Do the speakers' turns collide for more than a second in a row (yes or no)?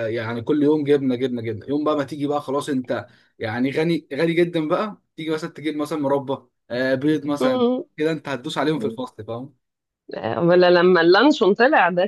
no